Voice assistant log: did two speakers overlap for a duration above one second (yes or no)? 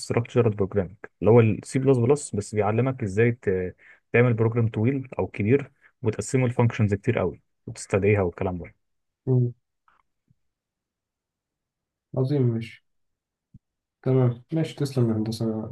no